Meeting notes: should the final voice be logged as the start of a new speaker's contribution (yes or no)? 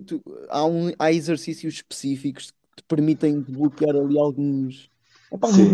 no